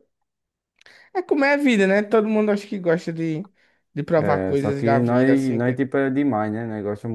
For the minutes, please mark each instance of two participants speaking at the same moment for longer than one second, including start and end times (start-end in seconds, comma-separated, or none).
4.2-5.8